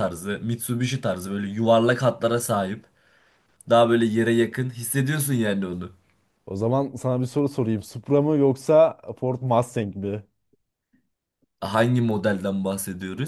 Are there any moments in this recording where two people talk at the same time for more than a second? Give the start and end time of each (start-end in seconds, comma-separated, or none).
none